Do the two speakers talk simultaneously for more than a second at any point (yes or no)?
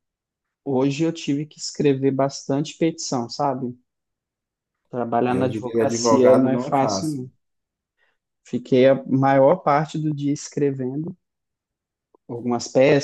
yes